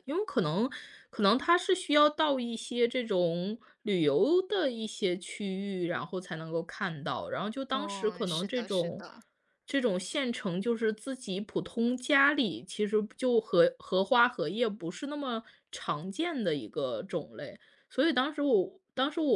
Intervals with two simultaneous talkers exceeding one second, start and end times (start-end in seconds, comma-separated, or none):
7.7-9.0